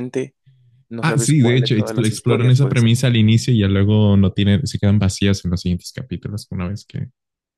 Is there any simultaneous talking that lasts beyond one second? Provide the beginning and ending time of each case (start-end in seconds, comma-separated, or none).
1.0-3.0